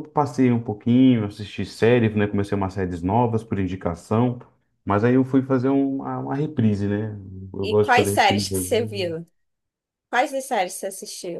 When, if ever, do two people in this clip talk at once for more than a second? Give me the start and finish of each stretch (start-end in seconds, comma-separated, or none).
7.6-9.1